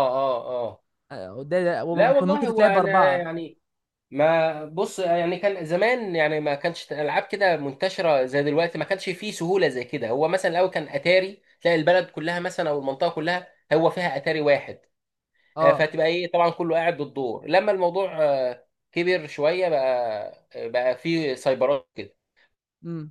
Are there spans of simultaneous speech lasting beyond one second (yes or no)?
yes